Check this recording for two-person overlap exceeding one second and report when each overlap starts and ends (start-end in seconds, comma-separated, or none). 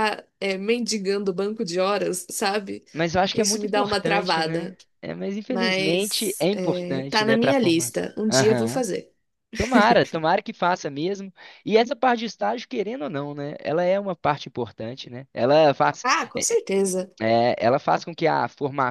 3.3-4.8, 5.5-8.8